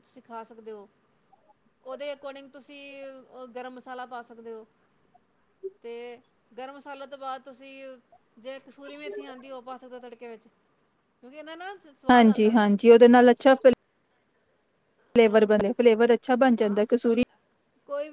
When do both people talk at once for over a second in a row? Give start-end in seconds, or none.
none